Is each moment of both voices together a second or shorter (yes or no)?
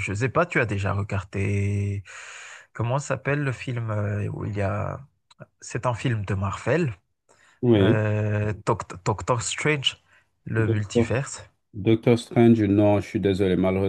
yes